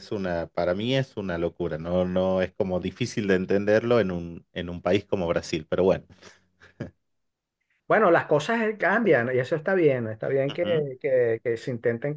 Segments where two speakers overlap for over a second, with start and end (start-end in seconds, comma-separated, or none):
none